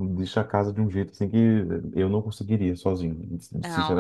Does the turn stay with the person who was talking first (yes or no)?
no